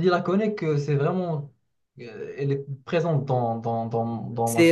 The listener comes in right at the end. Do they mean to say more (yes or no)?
yes